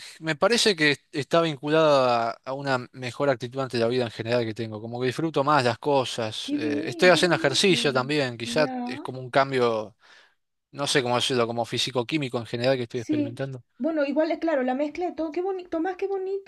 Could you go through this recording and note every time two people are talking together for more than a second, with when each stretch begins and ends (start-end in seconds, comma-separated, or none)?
6.4-7.7